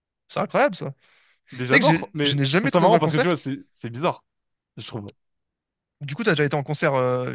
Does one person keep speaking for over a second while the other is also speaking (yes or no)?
yes